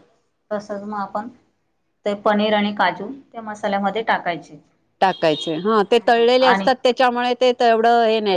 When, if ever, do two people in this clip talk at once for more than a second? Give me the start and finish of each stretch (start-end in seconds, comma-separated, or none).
none